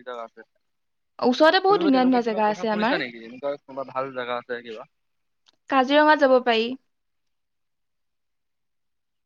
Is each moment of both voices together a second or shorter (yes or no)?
no